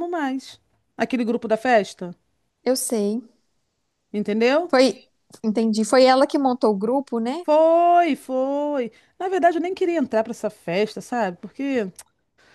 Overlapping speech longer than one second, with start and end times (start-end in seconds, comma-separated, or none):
none